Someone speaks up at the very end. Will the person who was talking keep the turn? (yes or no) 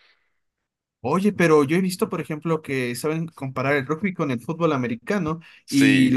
yes